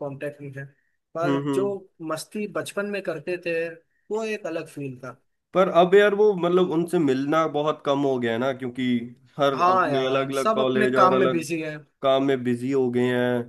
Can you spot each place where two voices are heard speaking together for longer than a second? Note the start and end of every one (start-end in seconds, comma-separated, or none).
9.5-11.4